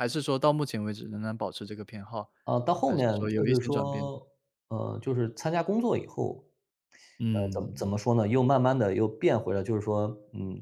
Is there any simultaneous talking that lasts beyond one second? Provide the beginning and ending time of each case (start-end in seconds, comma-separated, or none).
2.9-4.1